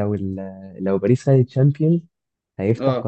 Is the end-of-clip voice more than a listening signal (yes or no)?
no